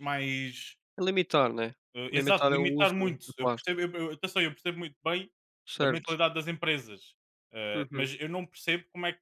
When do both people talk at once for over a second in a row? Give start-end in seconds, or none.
2.1-3.7